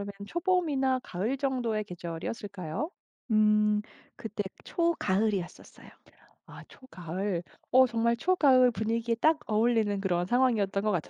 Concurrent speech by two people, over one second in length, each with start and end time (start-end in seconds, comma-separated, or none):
none